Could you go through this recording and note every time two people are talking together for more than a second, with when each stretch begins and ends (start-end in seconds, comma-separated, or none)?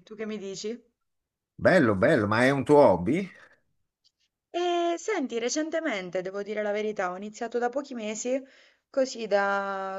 none